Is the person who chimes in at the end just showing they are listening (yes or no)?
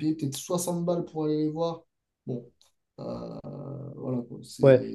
yes